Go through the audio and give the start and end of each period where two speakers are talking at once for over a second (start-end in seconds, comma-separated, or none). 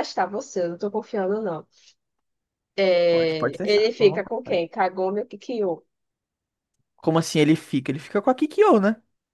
3.1-4.7